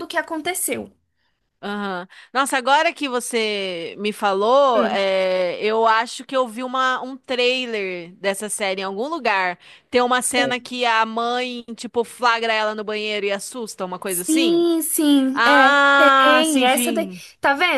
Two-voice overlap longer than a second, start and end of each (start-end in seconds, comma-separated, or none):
15.3-17.2